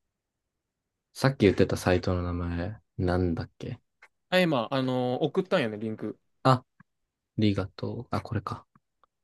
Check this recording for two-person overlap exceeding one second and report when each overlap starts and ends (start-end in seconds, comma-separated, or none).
none